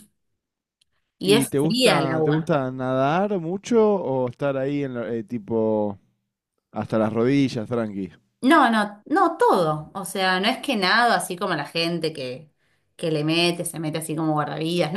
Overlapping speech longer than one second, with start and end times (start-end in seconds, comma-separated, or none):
1.2-2.5